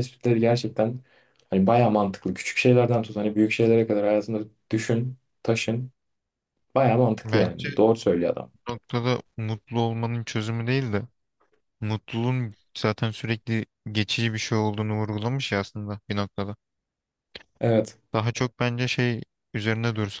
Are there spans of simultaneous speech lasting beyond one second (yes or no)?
no